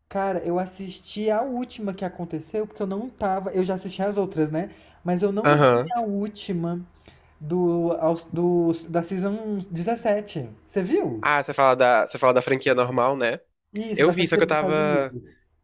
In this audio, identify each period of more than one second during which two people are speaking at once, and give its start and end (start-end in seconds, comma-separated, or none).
13.9-15.1